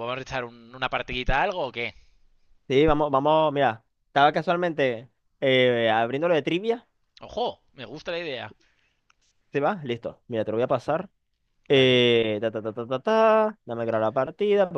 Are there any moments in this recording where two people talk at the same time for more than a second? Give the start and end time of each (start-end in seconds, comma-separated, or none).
none